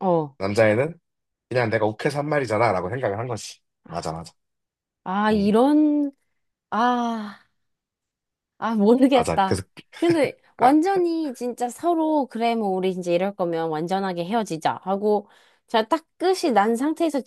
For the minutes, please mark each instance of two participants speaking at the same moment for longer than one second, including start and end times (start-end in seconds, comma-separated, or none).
none